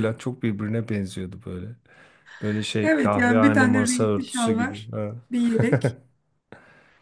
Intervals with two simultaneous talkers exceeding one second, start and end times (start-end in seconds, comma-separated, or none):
2.8-4.9